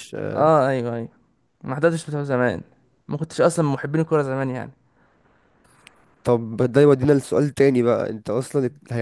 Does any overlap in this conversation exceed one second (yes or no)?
no